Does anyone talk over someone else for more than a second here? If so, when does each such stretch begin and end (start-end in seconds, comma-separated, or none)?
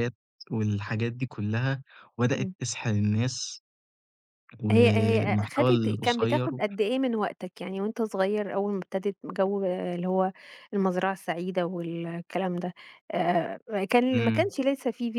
4.7-6.5